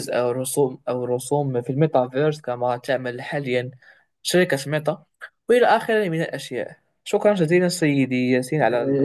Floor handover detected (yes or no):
yes